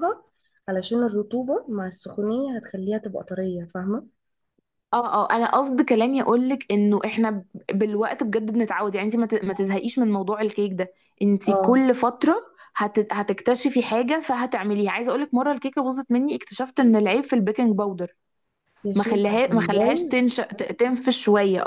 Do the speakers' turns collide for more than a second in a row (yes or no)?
yes